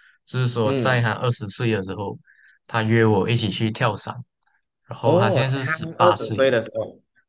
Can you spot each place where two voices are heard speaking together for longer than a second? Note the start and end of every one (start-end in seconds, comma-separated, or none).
5.0-6.5